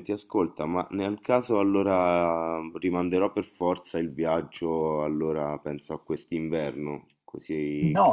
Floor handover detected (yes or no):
yes